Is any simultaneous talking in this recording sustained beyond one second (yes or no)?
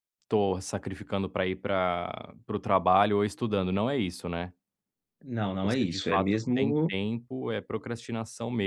yes